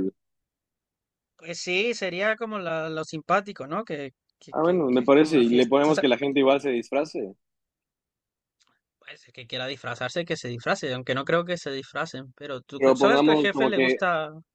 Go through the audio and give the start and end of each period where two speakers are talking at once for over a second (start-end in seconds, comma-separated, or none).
4.5-6.0, 12.8-14.0